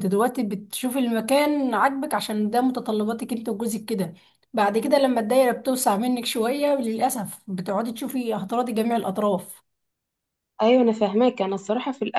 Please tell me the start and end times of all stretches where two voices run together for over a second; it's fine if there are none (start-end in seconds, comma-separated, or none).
none